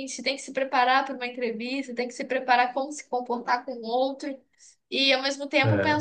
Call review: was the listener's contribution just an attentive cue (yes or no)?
yes